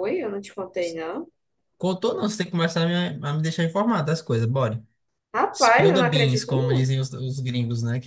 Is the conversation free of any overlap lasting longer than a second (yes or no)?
no